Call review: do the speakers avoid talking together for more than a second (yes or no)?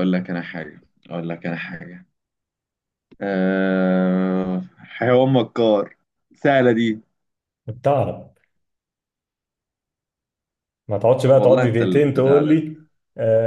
no